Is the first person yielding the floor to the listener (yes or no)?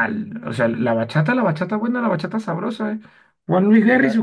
no